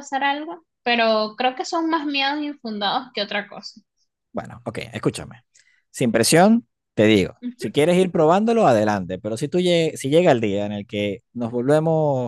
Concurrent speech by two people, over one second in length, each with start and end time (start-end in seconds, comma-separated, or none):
none